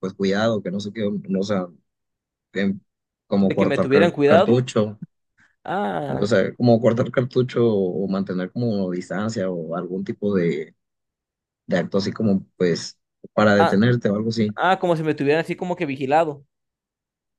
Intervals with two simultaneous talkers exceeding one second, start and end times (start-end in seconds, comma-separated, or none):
3.4-4.6